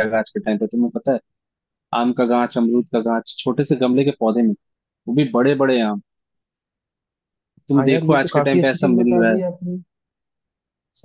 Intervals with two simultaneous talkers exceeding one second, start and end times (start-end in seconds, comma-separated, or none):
7.8-9.4